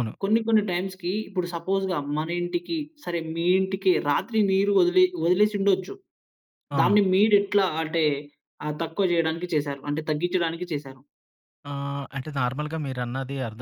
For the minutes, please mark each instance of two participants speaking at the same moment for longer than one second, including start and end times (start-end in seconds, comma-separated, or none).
none